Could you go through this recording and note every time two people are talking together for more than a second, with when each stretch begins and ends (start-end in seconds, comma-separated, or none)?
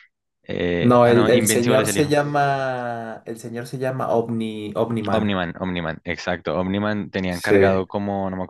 0.8-2.1